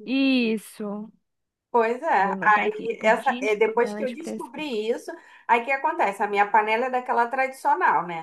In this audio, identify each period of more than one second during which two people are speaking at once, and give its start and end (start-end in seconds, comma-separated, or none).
2.2-4.6